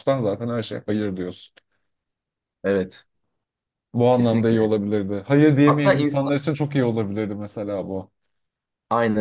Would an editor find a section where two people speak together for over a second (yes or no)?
no